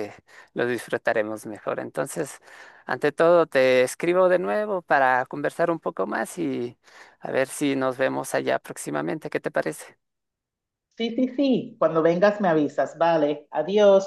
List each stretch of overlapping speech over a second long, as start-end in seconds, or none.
none